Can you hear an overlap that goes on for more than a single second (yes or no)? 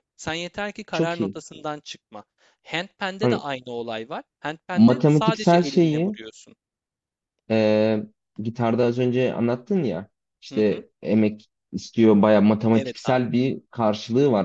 yes